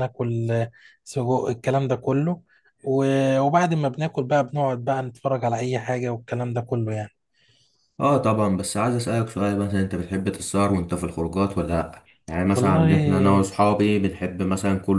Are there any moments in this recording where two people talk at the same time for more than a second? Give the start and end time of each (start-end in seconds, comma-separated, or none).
none